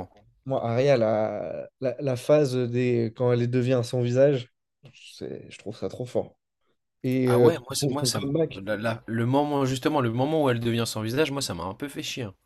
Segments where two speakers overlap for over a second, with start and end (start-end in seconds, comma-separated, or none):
7.2-8.6